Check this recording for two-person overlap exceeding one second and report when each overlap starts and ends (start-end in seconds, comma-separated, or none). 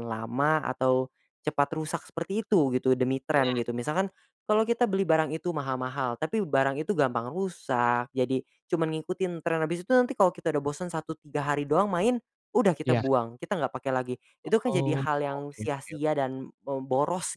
14.7-16.1